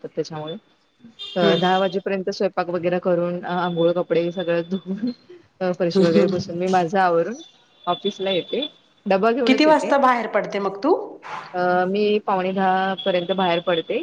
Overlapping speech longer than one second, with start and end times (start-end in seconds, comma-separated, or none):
none